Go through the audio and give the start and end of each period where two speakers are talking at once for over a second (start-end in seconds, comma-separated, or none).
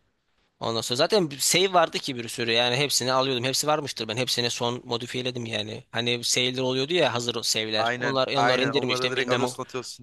7.8-9.4